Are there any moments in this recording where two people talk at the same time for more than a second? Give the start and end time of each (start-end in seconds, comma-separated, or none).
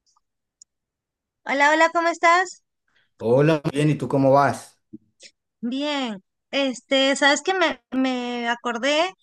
none